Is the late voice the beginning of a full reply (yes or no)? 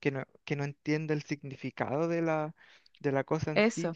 no